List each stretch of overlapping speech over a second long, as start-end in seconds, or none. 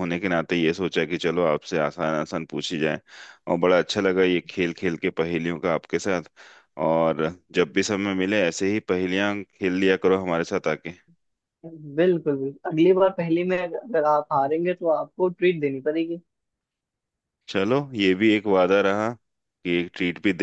none